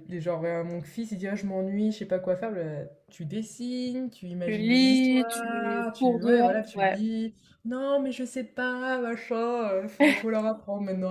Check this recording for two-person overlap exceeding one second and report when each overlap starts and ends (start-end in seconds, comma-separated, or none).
4.5-7.0